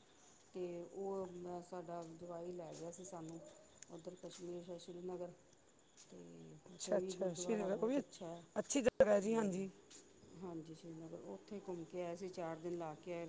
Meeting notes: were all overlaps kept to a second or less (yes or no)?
no